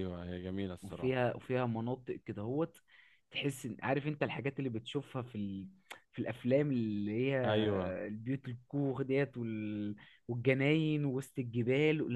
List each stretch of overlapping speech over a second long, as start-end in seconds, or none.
none